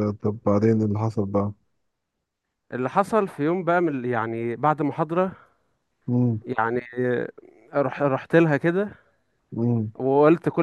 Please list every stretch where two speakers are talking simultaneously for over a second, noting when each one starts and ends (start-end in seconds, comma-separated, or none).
none